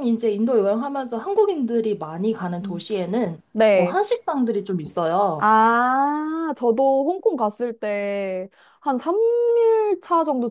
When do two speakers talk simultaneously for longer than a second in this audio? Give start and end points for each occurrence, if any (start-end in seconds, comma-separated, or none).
none